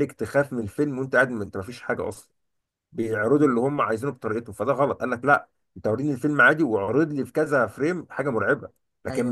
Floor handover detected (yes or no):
no